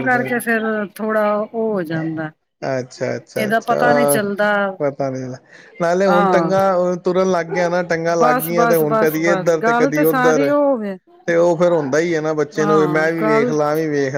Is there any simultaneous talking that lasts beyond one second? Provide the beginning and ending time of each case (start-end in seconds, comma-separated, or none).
8.2-10.5